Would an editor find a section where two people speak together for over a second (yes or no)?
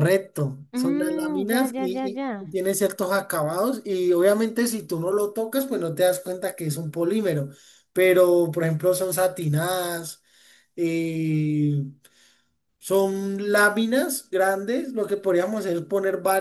yes